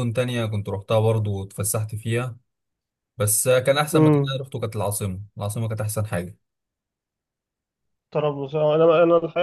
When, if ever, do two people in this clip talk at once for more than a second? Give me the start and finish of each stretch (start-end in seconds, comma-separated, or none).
none